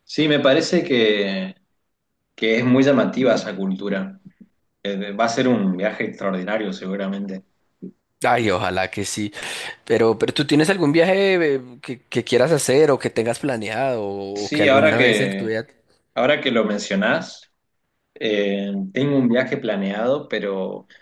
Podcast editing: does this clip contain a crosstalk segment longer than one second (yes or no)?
yes